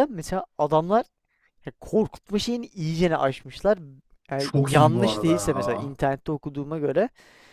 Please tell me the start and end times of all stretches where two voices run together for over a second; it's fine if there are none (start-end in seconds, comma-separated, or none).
4.4-6.0